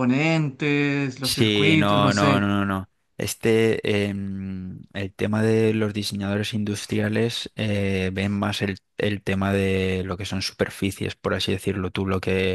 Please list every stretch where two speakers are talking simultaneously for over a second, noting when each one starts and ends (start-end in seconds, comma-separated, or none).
1.2-2.5